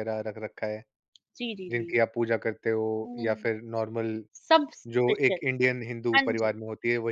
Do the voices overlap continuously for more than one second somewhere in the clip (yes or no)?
no